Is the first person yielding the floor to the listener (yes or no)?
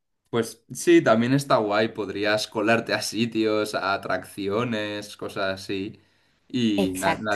no